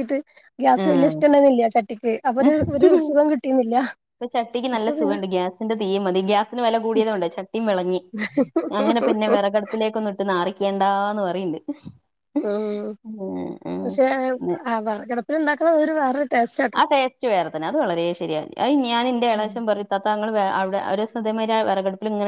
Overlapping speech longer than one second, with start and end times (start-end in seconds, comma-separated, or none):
none